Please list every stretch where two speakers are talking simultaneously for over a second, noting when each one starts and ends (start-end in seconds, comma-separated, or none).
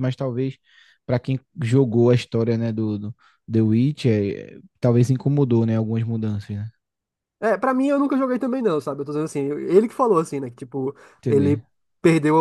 none